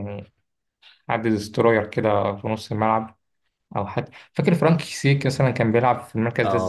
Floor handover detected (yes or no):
yes